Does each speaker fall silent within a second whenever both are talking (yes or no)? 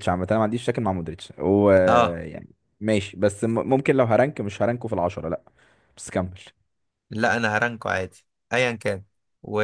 yes